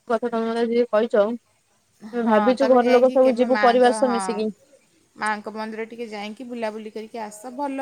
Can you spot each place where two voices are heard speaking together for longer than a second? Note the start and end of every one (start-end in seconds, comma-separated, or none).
2.3-4.2